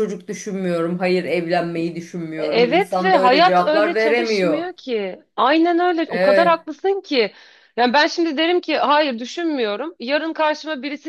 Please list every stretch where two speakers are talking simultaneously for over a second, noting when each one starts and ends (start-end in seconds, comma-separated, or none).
2.4-4.7